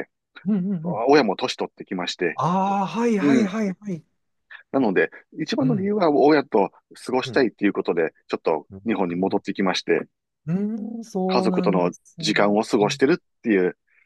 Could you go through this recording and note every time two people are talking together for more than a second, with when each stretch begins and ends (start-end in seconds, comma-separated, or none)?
11.3-13.0